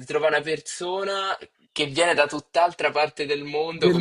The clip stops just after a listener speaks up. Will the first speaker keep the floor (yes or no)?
no